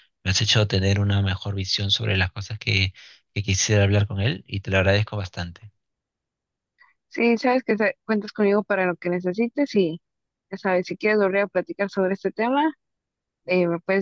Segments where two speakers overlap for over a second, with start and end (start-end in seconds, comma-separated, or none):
none